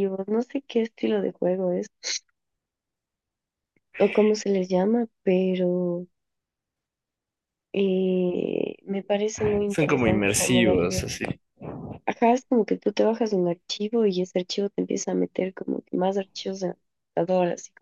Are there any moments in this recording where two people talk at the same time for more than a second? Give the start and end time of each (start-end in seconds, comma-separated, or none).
9.7-11.0